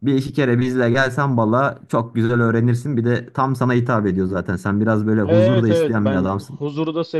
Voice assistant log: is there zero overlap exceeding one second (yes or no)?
no